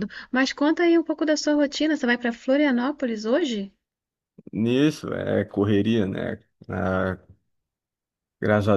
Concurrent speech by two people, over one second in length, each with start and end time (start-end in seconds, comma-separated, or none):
none